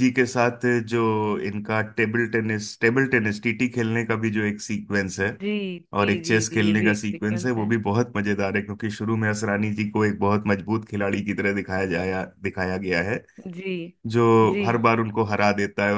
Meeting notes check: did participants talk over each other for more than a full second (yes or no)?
yes